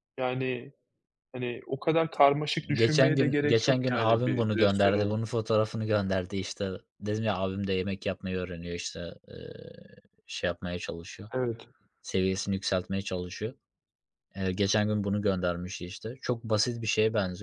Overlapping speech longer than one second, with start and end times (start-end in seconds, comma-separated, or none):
2.8-5.2